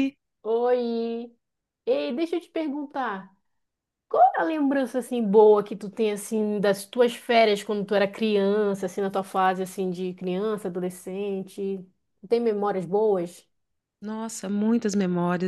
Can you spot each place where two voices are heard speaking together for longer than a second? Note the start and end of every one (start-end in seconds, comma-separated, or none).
none